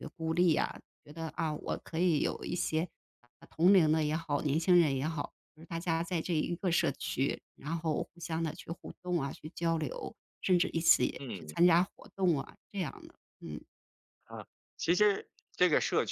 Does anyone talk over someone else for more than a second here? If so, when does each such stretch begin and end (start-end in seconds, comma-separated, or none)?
none